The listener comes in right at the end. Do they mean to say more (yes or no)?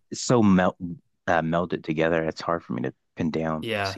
yes